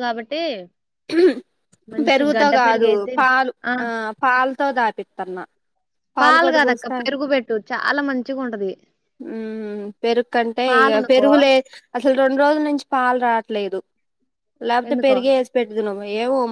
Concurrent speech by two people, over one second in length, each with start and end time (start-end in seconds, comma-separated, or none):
none